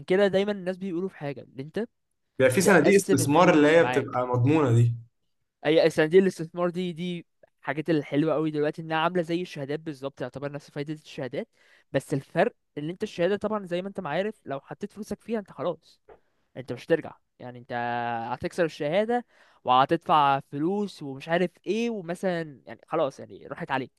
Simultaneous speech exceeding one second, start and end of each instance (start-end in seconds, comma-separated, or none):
2.6-4.2